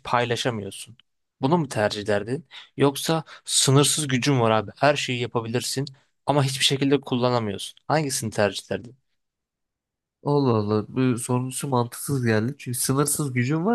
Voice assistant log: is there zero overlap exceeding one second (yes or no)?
yes